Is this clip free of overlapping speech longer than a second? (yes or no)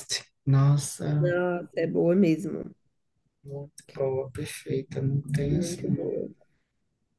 yes